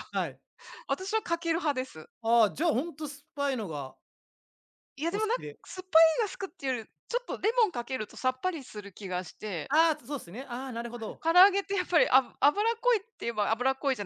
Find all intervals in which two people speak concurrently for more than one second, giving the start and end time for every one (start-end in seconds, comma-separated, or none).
none